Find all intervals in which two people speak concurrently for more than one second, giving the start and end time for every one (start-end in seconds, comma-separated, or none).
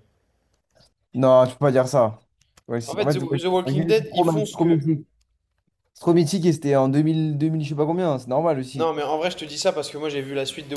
2.9-4.8